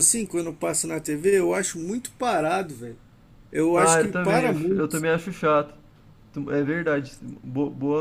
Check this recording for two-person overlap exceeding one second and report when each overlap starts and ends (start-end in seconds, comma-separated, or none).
3.7-5.1